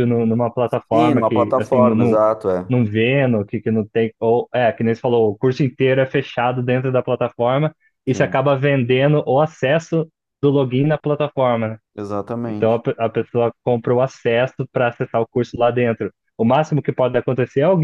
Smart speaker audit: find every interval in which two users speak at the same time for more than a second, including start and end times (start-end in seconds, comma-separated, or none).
0.7-2.2